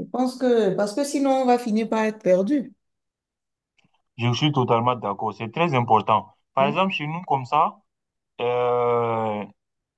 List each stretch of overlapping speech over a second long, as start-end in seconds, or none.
none